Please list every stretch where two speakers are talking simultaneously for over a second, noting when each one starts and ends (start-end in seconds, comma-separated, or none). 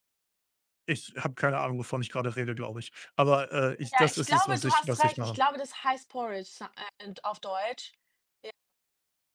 3.9-5.4